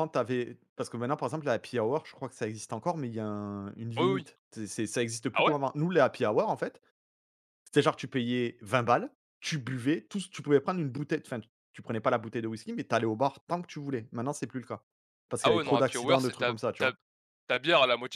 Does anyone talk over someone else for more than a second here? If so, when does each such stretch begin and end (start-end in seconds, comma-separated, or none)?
15.4-16.9